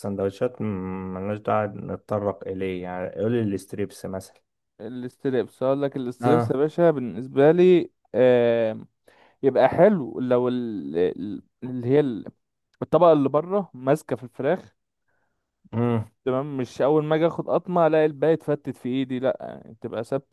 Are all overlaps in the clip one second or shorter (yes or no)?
yes